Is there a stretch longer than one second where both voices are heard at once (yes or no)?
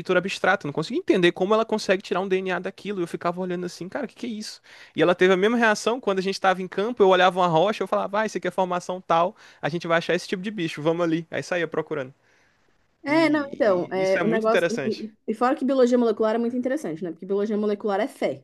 yes